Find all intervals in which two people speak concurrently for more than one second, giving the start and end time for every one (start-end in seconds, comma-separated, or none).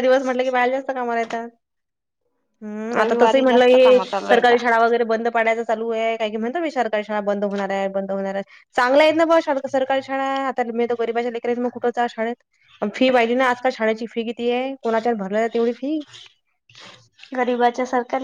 3.0-4.6